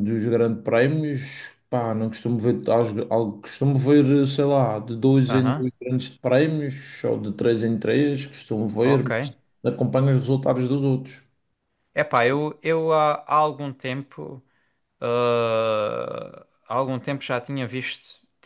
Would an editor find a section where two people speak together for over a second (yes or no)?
no